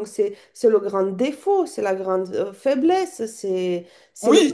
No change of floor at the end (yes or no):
no